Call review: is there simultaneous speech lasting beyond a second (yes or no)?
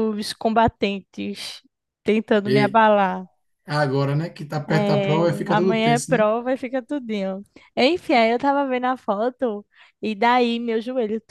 yes